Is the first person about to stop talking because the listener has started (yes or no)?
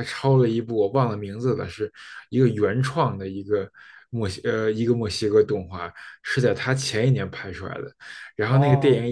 no